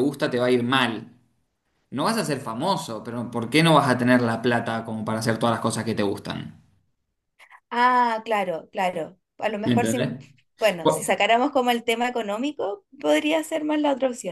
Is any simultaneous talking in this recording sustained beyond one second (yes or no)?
no